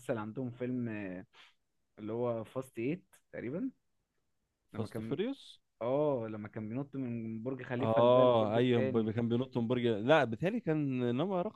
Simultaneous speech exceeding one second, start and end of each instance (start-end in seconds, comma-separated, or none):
7.8-9.1